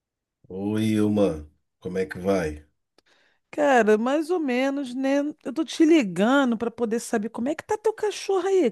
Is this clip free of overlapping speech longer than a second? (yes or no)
yes